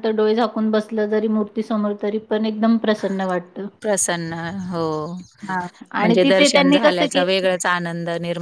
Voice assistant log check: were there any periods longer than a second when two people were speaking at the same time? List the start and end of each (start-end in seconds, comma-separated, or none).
6.0-7.5